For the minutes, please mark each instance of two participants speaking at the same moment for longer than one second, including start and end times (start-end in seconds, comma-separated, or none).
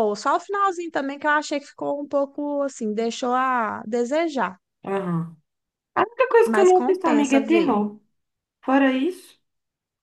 6.4-7.8